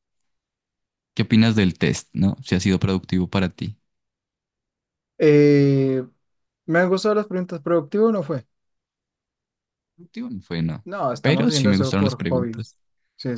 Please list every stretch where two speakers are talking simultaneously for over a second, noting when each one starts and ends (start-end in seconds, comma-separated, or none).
10.8-12.7